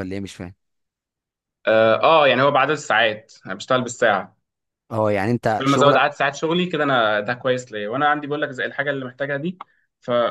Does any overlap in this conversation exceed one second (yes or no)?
no